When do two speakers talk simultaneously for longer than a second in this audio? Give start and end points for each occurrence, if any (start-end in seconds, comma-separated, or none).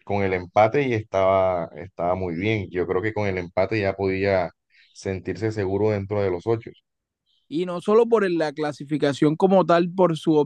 none